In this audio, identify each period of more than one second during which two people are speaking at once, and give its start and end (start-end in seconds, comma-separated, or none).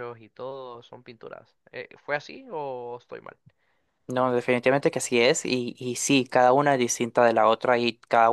none